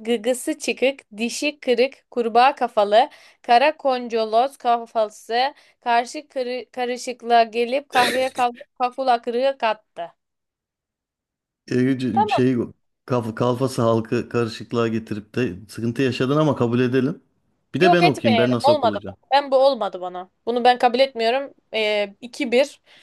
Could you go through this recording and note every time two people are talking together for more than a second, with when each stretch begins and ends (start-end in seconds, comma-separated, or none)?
17.8-19.2